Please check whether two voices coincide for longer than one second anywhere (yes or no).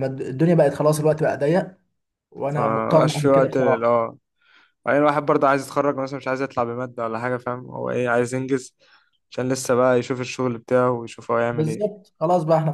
yes